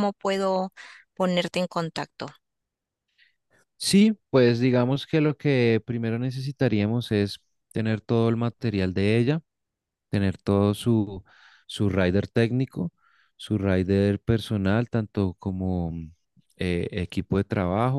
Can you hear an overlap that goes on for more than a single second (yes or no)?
no